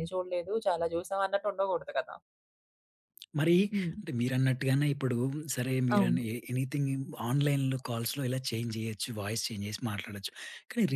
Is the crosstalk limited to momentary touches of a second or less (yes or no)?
yes